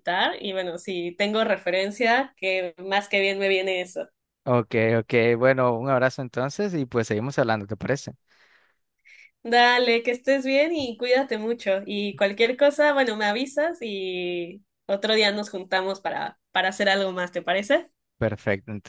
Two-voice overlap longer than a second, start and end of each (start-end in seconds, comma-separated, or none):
none